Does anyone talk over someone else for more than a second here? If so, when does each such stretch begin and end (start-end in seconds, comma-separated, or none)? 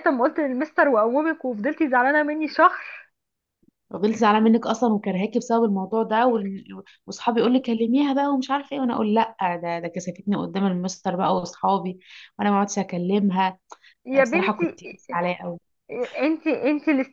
none